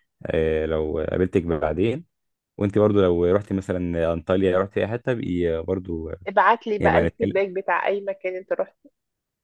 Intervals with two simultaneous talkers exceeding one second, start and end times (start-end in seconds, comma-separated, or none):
none